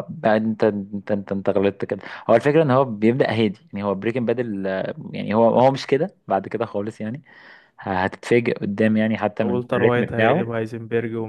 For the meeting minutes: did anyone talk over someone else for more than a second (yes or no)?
yes